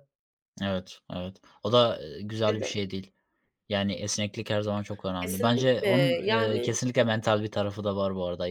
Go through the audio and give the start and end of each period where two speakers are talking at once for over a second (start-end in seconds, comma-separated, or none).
5.2-6.8